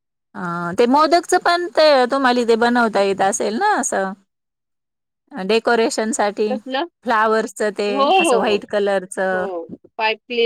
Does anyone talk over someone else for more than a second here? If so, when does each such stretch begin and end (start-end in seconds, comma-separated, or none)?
none